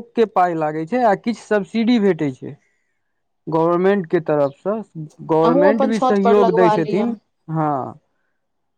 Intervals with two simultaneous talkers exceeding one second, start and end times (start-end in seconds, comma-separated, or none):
5.4-7.1